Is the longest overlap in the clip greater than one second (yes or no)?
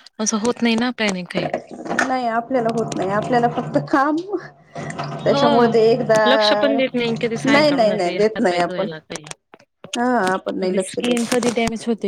yes